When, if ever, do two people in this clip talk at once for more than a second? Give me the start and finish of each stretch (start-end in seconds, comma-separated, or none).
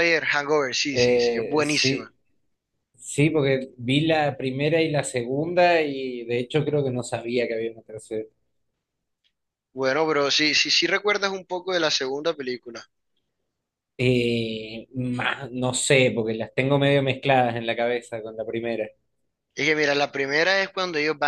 0.9-2.1